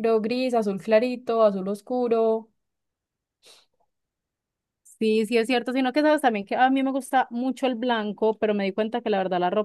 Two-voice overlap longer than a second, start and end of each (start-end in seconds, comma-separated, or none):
none